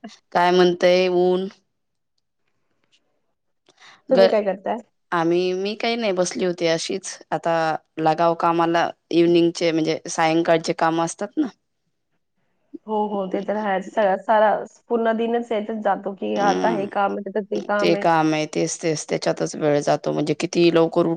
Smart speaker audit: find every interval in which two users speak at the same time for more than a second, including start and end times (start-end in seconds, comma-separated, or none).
none